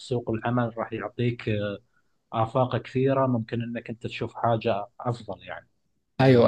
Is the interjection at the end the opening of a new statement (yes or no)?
yes